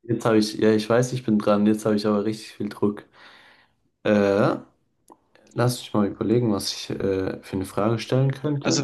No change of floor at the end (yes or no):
no